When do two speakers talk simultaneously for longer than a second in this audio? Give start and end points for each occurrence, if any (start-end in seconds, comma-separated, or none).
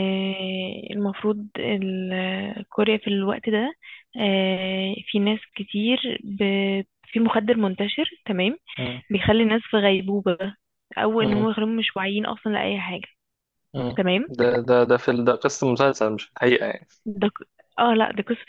none